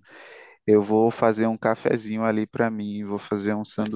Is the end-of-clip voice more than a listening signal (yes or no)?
no